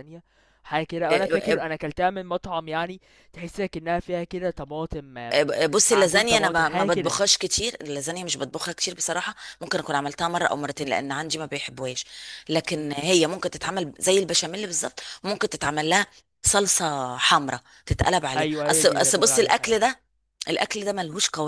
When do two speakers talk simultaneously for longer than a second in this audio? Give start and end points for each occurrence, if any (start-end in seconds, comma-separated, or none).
5.9-7.2, 18.4-19.8